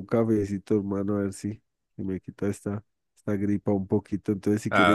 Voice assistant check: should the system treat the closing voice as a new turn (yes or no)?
no